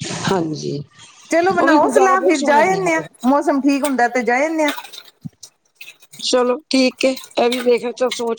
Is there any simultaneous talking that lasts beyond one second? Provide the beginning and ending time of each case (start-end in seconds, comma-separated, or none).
1.6-3.1